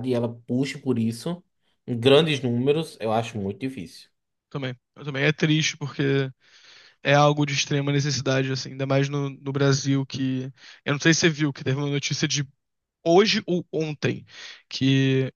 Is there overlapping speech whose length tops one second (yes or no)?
no